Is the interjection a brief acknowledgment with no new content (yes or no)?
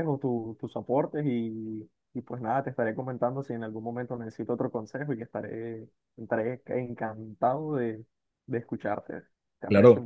no